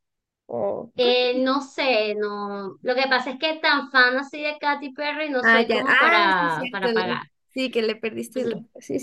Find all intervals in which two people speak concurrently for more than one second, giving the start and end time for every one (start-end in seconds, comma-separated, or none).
5.4-7.2